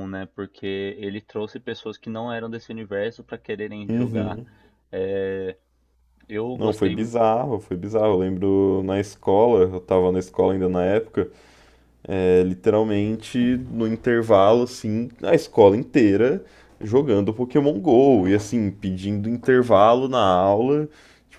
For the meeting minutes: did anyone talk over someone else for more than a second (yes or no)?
no